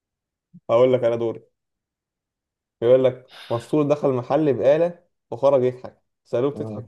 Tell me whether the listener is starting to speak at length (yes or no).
no